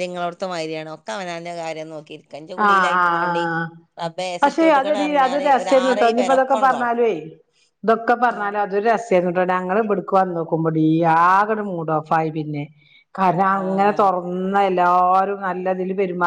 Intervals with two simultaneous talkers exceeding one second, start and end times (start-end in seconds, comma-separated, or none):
4.4-6.9